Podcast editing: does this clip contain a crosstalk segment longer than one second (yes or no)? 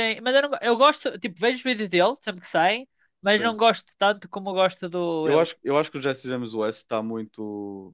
no